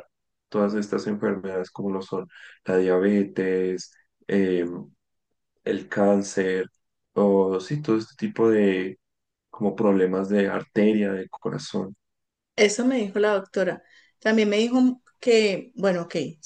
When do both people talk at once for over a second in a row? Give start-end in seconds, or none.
none